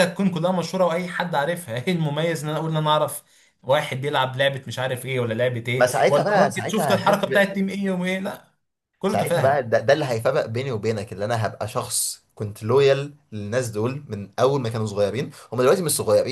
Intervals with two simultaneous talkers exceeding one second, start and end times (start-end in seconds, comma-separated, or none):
5.8-7.5